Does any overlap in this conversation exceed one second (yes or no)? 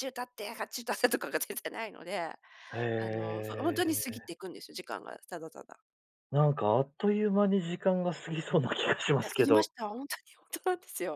yes